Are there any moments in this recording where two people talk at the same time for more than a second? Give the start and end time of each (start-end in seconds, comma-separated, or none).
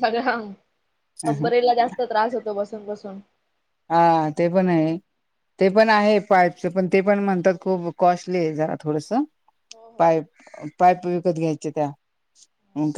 none